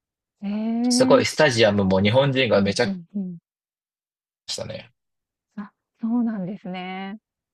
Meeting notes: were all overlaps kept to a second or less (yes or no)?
yes